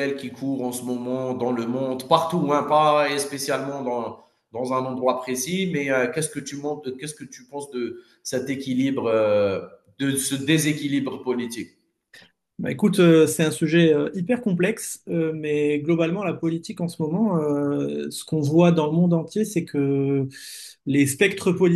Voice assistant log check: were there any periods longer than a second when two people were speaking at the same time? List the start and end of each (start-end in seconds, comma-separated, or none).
none